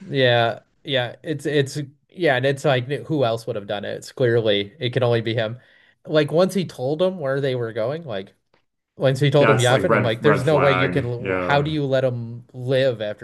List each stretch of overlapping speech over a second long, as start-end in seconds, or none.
9.4-11.7